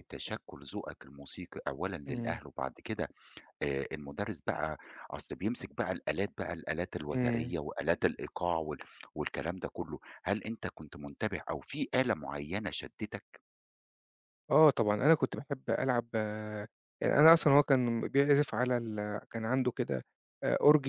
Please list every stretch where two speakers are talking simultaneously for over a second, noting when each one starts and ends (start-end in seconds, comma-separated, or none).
none